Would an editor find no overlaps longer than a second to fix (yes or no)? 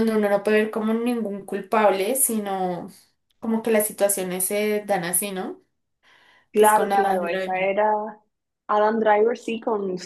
no